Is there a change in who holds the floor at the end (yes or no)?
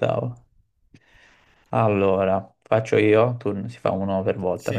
no